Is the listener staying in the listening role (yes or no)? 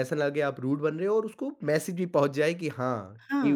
no